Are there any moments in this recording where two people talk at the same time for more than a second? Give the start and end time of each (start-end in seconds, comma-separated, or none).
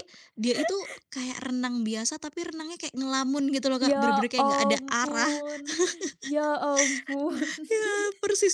3.8-5.3